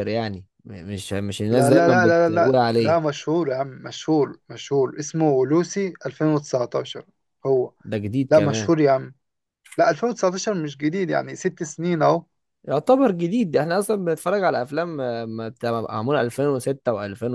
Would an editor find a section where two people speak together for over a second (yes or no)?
yes